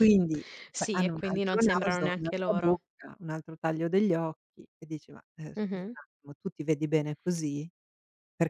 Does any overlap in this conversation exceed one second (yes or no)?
yes